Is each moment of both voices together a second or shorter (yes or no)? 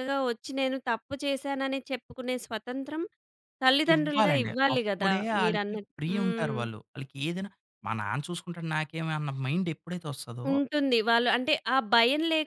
no